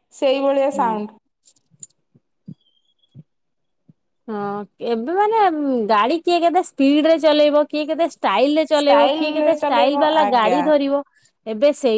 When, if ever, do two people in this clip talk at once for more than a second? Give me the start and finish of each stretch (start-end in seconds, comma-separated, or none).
8.8-10.6